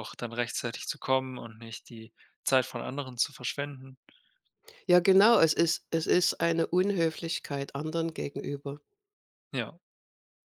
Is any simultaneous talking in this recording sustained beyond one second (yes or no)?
no